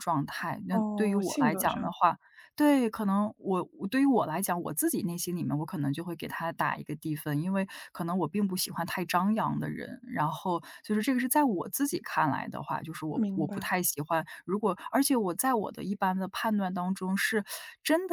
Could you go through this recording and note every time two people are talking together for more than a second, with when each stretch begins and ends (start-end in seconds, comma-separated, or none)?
0.7-1.9